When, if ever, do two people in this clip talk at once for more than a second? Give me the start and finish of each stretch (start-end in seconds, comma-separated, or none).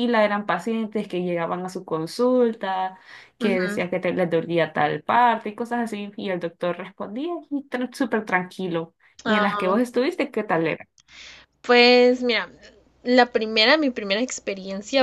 none